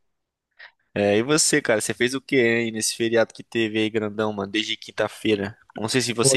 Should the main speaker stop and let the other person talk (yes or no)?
no